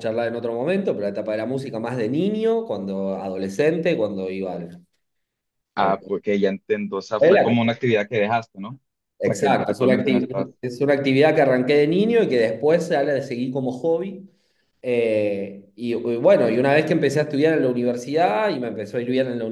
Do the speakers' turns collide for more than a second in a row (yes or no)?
yes